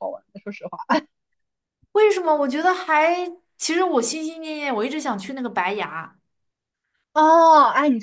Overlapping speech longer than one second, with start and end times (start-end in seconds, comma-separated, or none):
none